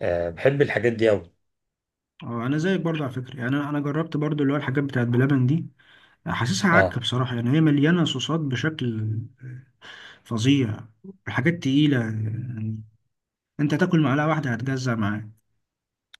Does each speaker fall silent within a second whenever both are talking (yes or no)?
yes